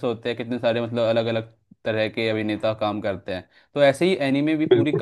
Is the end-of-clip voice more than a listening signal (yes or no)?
no